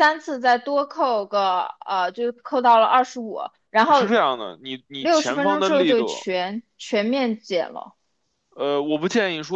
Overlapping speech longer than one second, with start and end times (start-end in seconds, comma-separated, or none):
5.0-6.3